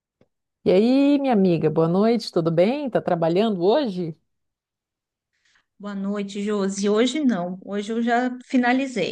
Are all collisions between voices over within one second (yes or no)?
yes